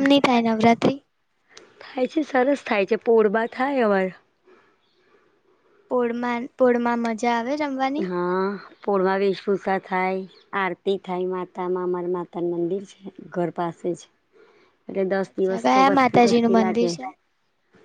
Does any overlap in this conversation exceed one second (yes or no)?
yes